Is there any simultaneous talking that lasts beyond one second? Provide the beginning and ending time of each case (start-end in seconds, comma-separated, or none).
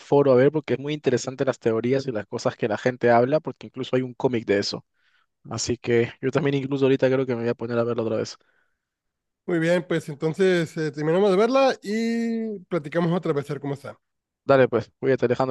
none